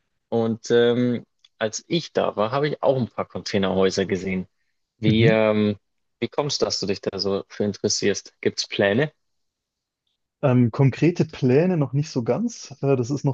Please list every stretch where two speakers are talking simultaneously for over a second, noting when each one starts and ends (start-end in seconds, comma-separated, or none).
none